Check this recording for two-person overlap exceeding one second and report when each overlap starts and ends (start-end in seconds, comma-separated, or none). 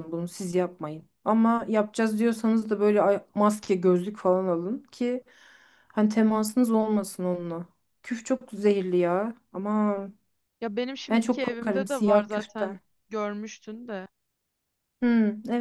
11.1-12.8